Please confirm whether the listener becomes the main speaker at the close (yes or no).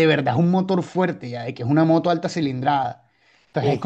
no